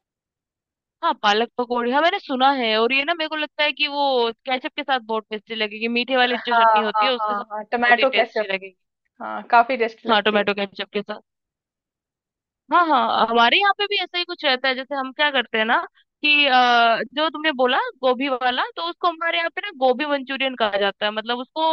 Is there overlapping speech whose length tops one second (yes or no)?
yes